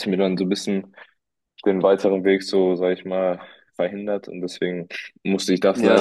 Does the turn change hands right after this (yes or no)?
no